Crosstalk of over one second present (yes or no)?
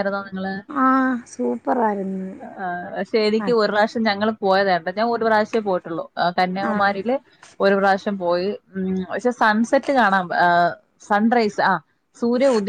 no